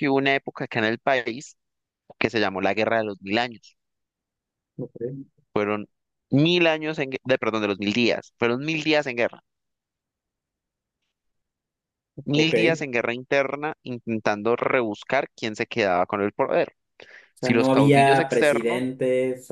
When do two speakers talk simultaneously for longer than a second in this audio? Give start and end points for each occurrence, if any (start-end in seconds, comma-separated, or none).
17.4-18.8